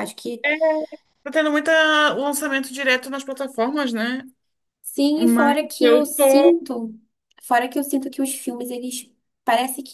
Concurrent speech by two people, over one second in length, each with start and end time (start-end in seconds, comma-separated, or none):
5.2-6.5